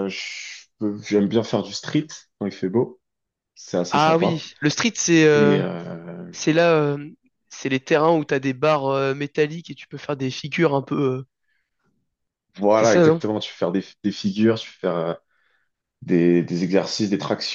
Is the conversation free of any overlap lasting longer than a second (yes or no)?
yes